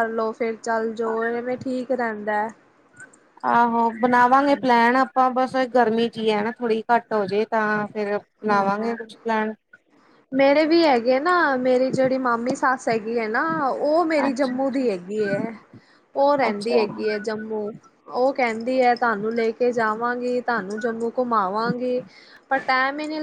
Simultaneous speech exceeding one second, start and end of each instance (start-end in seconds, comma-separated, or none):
none